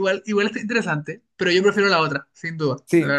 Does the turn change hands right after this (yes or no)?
yes